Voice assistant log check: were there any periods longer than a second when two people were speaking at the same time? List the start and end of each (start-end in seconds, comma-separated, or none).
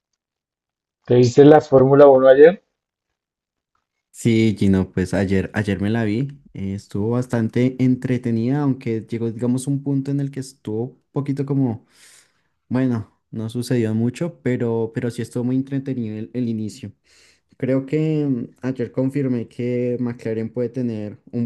none